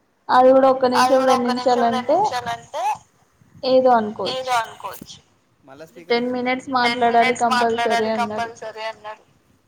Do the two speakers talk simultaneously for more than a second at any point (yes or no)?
yes